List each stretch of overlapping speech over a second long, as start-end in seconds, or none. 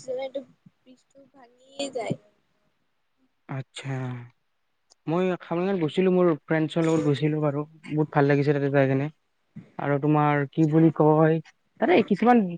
none